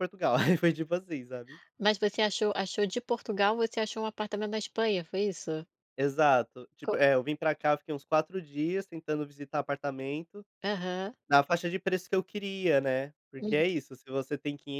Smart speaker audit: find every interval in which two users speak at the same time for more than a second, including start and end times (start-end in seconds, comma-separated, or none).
none